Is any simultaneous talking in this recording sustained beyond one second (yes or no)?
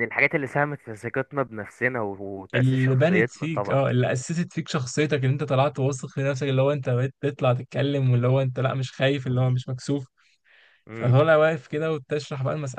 yes